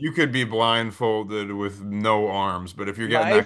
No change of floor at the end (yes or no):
yes